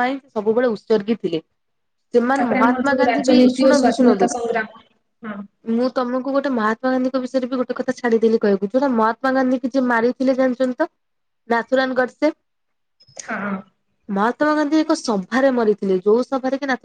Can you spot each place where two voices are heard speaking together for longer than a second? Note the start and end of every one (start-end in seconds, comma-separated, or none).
2.4-4.3